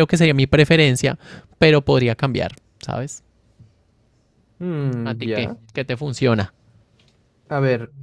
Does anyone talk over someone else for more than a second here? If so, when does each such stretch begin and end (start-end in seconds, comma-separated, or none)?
none